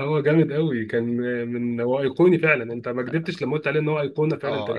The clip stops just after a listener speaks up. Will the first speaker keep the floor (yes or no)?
no